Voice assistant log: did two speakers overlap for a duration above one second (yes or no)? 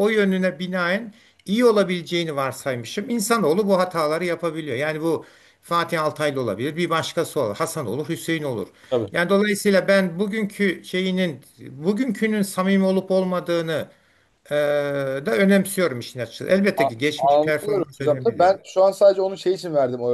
yes